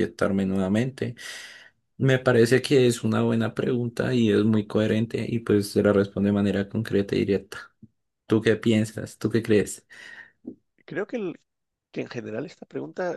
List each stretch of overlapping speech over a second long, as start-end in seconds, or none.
none